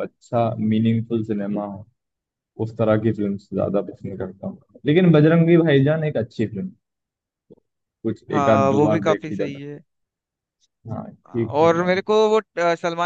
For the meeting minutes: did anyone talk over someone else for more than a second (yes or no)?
yes